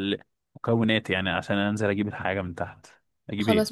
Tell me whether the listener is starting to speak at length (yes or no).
yes